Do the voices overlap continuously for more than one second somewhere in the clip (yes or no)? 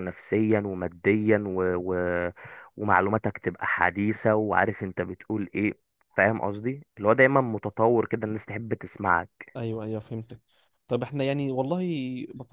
no